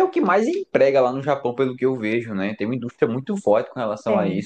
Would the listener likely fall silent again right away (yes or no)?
no